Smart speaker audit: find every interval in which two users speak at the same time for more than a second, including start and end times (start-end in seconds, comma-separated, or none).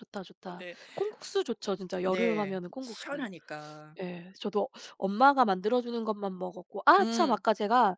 2.0-3.3